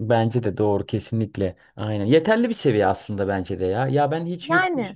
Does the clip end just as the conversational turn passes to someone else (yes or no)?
no